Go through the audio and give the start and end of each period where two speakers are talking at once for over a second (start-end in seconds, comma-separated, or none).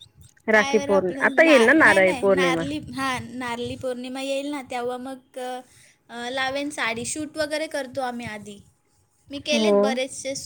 0.5-2.6